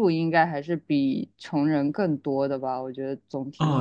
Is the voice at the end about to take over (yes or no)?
yes